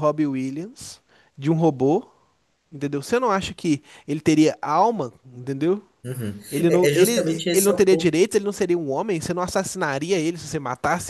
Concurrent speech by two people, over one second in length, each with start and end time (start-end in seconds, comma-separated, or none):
6.5-8.1